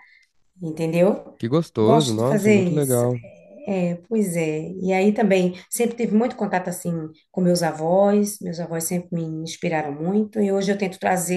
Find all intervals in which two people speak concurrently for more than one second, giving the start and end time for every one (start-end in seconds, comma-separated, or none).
1.8-3.0